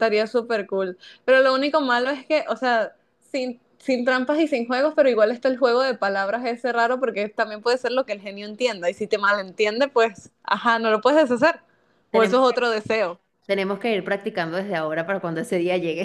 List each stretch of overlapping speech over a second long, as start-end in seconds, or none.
none